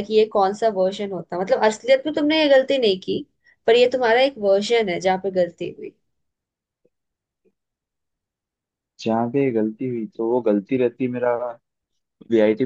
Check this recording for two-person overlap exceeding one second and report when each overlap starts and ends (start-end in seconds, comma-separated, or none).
none